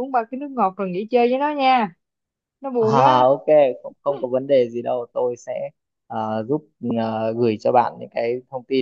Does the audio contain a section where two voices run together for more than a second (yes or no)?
no